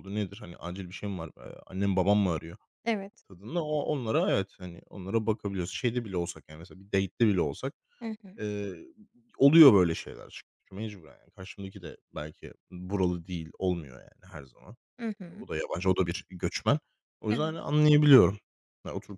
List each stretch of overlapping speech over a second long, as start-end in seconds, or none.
none